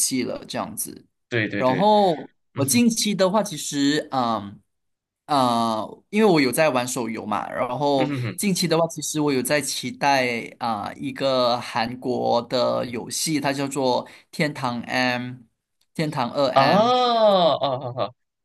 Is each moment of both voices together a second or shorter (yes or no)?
yes